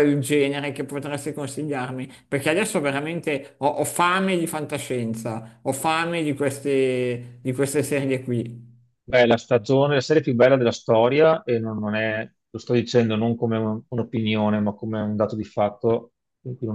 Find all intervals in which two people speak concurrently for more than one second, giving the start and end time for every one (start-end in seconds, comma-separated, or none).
none